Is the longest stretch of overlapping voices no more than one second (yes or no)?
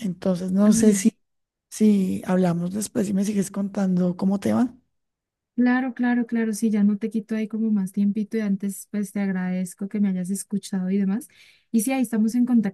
yes